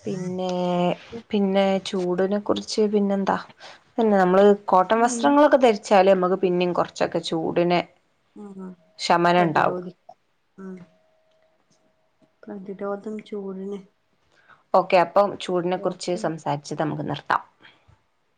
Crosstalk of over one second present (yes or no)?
no